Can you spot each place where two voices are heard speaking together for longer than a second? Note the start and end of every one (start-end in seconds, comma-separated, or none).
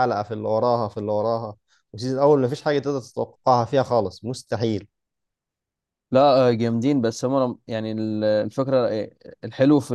none